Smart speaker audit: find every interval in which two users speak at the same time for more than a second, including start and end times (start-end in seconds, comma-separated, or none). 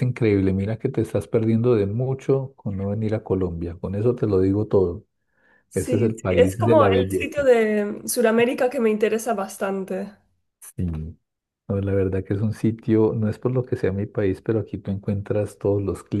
5.7-7.5